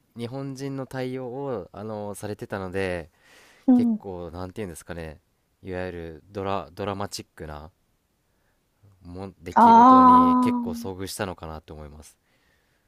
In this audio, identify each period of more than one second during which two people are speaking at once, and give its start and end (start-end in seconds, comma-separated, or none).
9.6-10.9